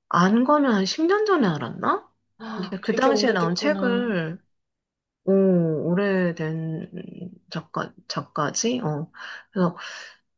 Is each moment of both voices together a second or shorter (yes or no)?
no